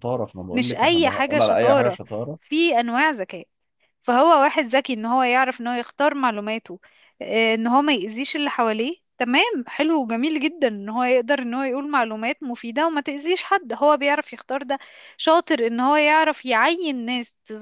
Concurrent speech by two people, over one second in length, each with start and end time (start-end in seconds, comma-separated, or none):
0.5-2.0